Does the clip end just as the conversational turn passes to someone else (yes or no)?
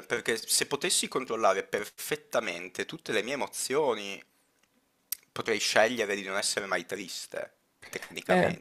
yes